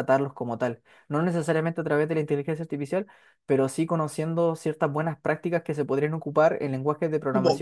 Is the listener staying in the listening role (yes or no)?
no